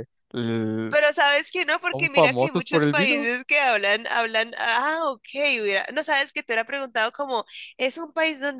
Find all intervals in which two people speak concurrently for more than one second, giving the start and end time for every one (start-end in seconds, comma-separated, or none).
1.9-3.3